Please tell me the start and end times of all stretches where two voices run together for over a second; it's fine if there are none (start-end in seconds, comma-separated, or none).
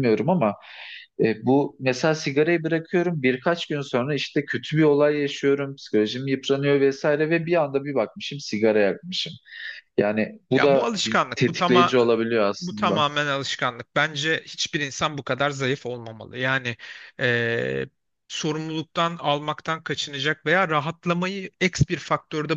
10.5-11.9